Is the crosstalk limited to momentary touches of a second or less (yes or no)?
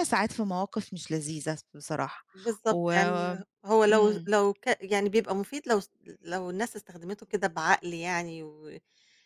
yes